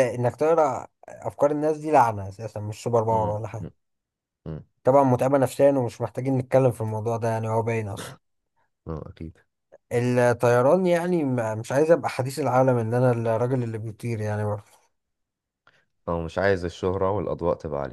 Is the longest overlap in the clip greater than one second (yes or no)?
no